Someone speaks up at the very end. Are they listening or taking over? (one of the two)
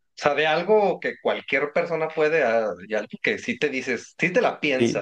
taking over